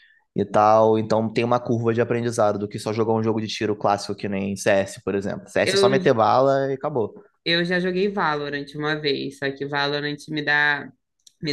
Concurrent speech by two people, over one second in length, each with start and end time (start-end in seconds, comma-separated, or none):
none